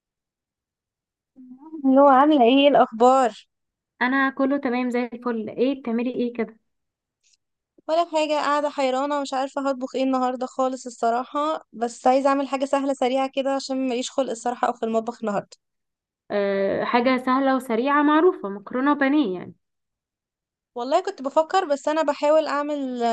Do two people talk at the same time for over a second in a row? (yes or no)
no